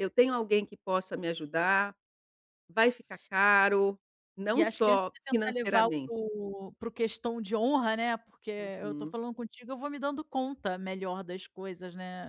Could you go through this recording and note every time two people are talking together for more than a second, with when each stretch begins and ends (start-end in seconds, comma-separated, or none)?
4.5-6.2